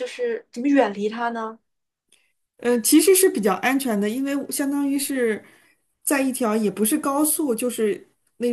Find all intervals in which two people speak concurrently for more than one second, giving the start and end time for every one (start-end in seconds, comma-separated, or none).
none